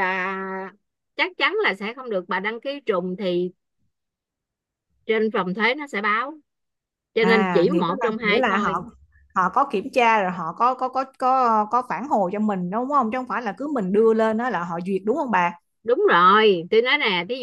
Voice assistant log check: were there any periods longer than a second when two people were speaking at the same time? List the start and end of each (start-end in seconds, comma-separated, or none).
7.2-8.7